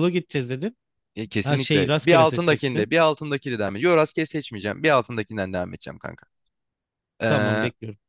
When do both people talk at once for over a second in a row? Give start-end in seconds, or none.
1.4-2.9